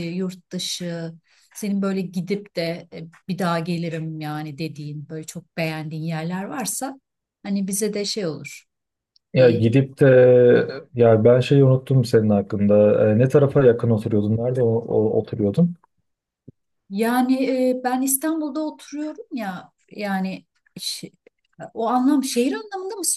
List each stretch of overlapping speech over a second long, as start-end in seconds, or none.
none